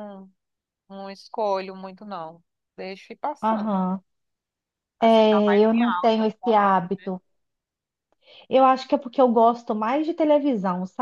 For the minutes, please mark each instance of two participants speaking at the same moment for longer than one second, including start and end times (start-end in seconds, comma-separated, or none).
5.0-7.1